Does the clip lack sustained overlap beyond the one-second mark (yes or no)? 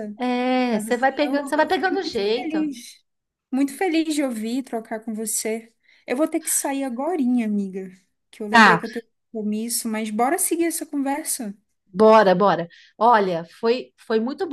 no